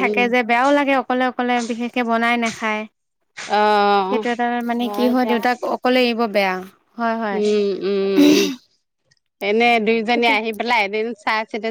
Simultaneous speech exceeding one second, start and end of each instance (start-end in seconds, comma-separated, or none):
none